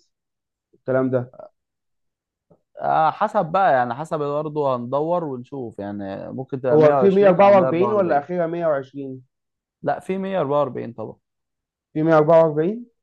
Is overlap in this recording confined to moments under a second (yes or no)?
no